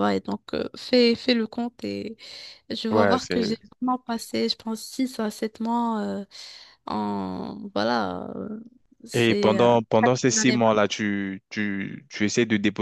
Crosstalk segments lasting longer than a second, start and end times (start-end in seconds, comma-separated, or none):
9.1-10.7